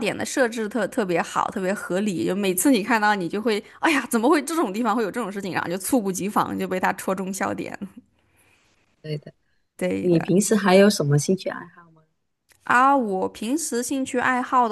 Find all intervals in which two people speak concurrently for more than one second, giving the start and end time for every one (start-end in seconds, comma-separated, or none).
none